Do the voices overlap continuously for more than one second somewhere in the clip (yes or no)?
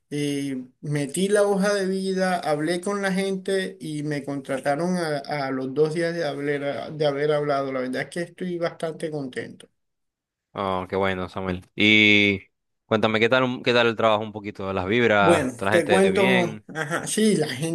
yes